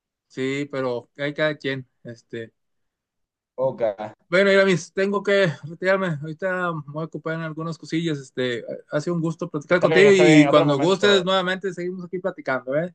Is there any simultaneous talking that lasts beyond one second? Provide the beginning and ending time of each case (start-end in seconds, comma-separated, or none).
9.7-11.2